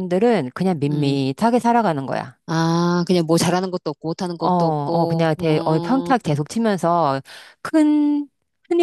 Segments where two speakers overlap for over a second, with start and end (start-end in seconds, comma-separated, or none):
4.4-6.1